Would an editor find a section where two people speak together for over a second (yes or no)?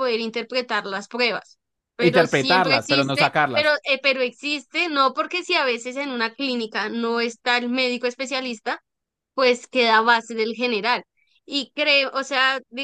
yes